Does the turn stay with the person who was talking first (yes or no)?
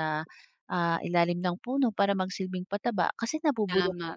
no